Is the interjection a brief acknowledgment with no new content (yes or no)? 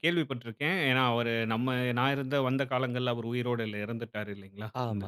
no